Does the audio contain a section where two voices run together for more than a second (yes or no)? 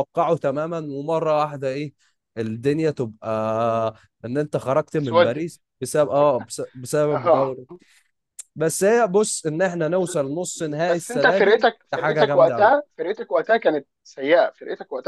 yes